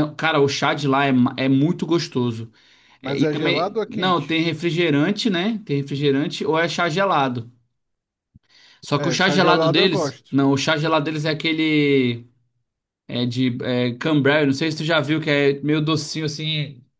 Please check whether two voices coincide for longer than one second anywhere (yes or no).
yes